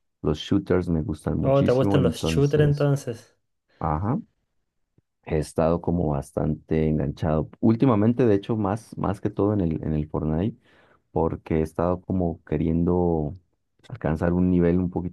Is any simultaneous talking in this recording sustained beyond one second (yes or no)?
yes